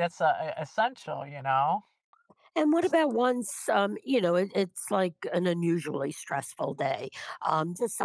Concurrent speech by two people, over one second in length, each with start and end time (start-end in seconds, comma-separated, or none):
none